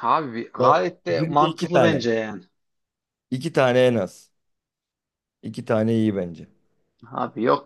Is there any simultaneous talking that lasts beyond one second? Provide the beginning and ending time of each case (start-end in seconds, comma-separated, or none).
0.6-2.1